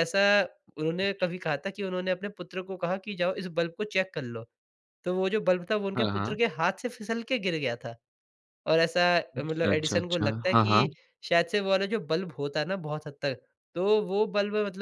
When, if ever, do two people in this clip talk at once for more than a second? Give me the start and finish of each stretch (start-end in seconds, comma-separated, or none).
9.4-10.9